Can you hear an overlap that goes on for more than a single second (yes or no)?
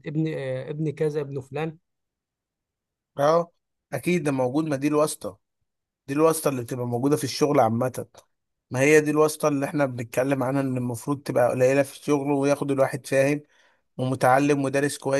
no